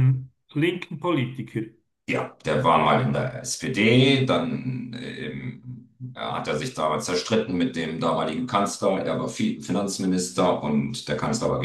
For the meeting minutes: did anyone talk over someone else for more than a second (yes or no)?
no